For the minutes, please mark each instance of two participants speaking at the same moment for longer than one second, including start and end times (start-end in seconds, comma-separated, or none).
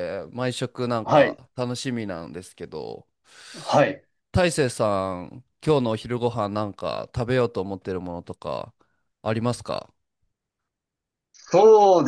none